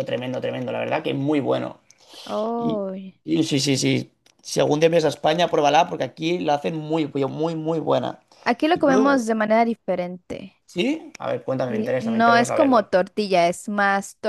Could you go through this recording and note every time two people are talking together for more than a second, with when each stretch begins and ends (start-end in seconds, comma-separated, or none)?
11.7-12.9